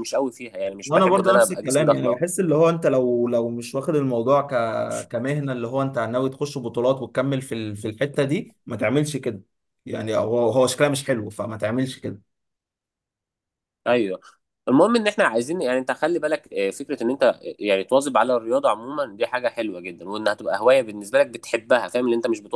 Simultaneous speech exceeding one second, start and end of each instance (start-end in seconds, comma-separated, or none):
0.8-2.2